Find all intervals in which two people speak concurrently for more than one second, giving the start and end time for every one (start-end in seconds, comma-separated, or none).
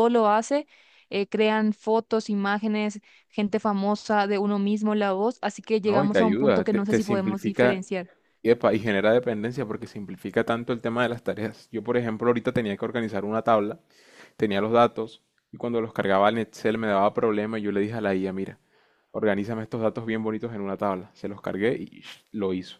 5.8-7.8